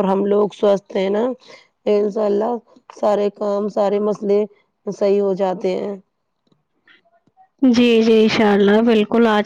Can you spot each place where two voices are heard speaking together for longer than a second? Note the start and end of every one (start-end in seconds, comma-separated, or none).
none